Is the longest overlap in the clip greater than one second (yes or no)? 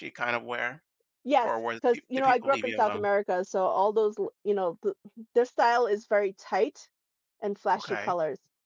yes